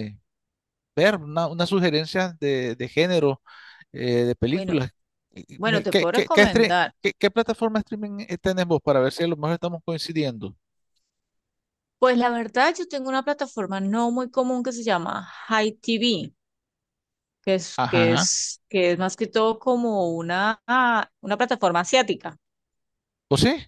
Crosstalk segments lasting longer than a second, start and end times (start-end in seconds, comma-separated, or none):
5.6-6.9